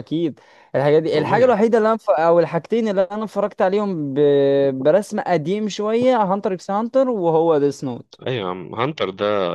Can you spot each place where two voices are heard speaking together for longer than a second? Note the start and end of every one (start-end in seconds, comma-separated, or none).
none